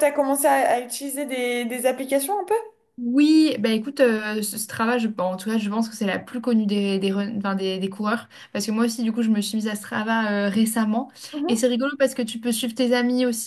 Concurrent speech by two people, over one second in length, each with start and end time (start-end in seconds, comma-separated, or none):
none